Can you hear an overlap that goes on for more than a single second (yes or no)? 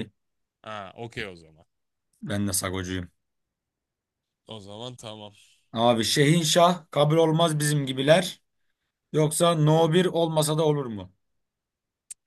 no